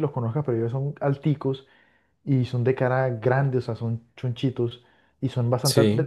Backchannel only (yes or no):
yes